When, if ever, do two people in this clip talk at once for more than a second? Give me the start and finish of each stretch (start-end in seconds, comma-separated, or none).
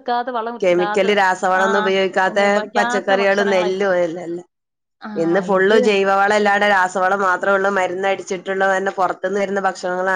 2.3-4.0